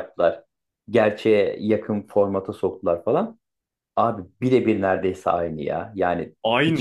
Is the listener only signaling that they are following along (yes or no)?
yes